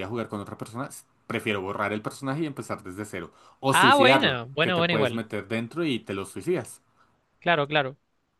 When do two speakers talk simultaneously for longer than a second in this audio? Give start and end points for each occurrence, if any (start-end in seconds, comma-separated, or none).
3.7-5.2